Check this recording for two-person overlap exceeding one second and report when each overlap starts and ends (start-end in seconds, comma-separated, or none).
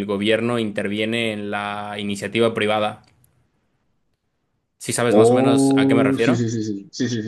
5.1-6.4